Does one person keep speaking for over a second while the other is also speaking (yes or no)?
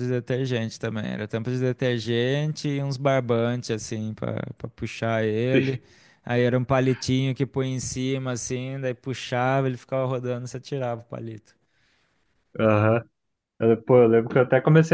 no